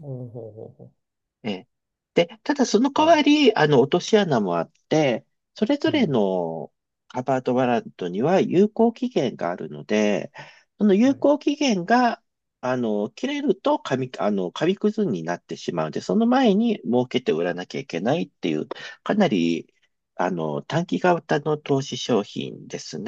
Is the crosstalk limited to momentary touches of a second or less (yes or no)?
yes